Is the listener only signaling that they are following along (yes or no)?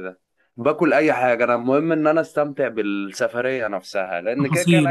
yes